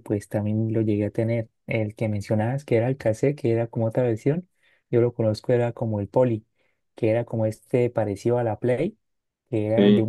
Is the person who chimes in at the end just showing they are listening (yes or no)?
yes